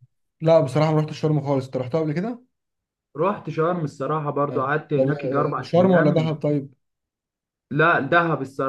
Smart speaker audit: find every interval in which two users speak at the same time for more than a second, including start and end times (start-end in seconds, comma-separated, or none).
4.5-6.4